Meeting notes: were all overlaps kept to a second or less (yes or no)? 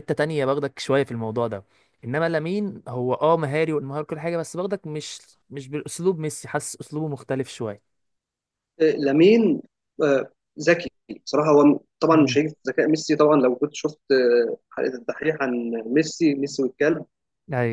yes